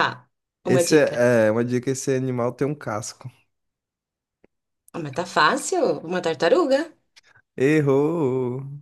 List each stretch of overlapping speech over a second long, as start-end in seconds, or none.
none